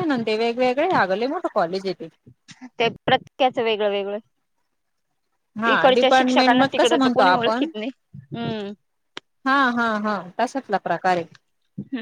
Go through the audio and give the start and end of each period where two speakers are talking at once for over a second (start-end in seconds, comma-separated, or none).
5.7-7.7